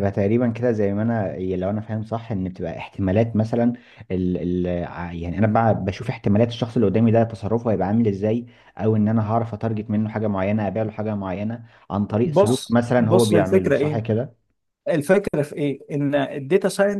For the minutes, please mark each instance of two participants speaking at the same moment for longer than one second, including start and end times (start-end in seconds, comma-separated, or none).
12.2-14.0